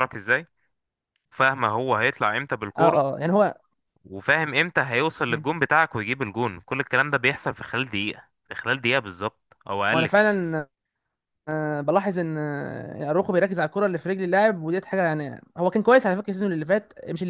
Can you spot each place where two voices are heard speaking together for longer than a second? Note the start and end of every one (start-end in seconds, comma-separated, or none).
none